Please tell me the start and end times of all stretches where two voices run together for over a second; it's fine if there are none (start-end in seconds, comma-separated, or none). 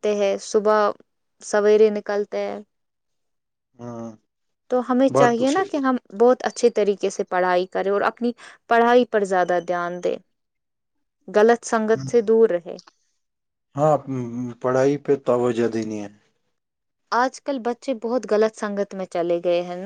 none